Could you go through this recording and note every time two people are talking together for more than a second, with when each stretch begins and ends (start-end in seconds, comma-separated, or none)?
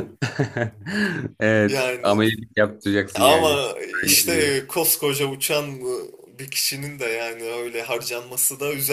3.2-4.6